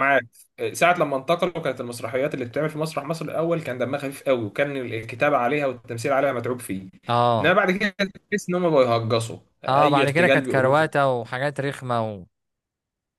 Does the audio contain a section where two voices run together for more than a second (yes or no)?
yes